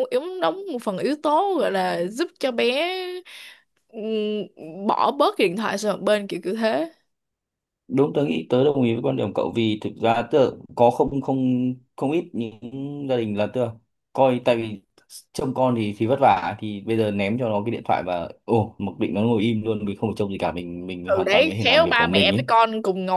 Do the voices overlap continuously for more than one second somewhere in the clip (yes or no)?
yes